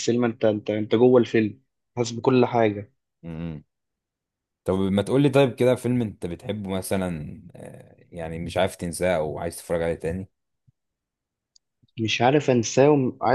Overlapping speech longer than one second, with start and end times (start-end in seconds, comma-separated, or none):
none